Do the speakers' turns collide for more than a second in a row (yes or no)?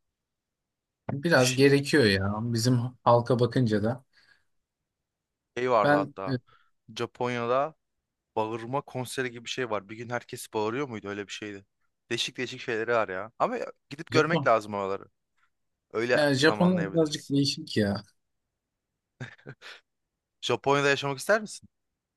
yes